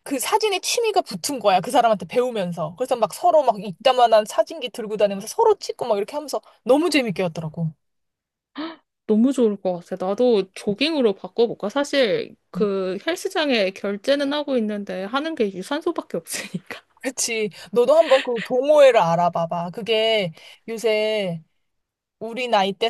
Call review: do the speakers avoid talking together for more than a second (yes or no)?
yes